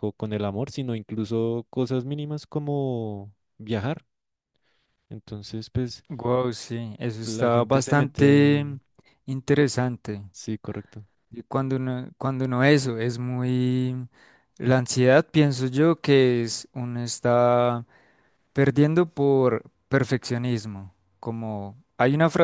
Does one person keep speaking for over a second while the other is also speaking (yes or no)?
yes